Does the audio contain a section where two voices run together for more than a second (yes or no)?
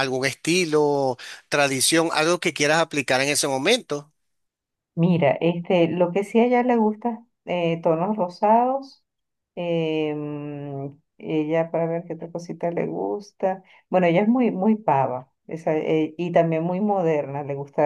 no